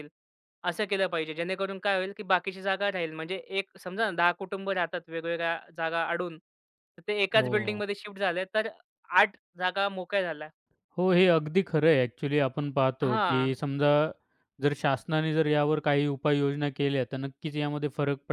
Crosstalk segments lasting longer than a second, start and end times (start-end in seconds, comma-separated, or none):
none